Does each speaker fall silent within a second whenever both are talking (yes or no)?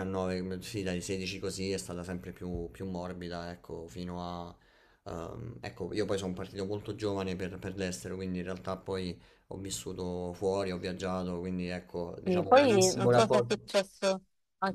no